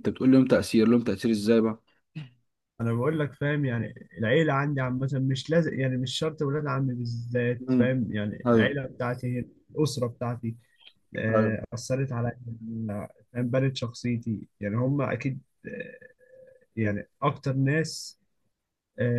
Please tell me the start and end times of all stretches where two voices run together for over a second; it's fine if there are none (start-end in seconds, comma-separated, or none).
none